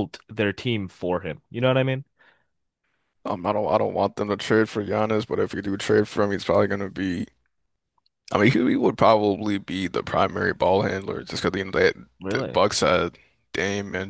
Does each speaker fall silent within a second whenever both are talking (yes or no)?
yes